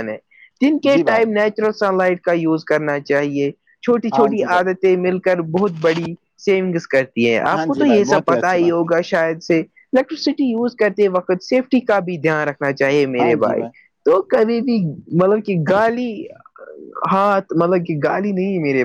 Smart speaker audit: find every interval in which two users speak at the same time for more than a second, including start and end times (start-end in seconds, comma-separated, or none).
7.5-8.9